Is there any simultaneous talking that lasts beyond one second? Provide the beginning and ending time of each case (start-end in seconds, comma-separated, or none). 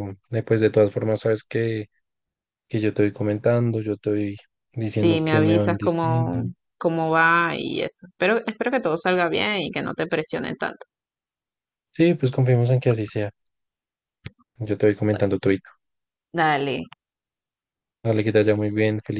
4.8-6.4